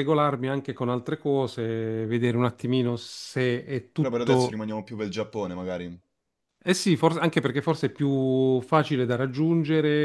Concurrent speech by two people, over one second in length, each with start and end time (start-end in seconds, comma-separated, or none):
none